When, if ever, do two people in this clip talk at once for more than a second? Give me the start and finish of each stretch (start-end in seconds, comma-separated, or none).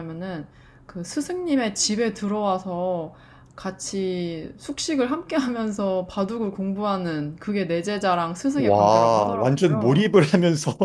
8.6-10.1